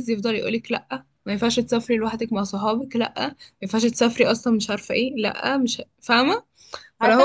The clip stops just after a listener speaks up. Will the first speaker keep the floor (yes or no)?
no